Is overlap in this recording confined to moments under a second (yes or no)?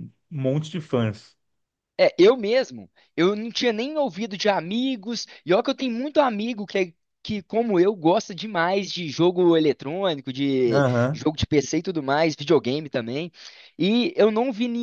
yes